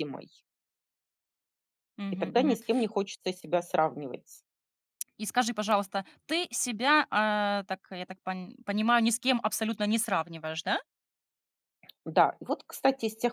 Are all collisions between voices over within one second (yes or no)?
yes